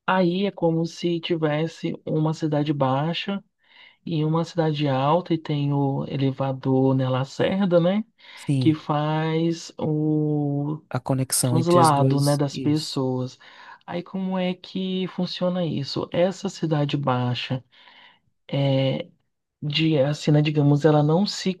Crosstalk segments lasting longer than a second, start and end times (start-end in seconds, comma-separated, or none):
11.4-13.0